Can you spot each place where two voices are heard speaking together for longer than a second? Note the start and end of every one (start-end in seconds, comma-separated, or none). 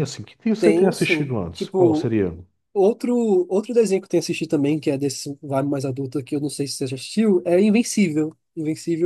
0.6-2.1